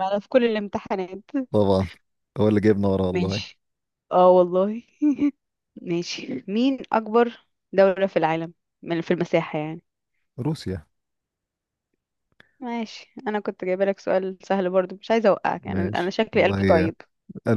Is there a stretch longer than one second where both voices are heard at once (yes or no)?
yes